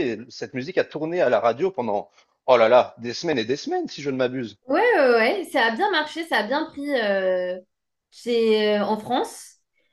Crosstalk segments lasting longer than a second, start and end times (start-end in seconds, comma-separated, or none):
none